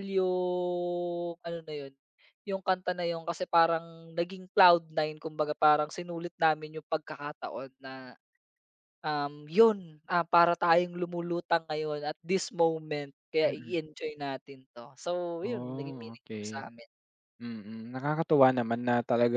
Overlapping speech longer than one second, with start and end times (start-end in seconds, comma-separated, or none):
15.4-16.6